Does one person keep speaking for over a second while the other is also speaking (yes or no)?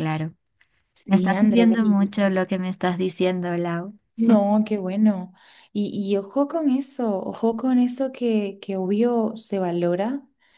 yes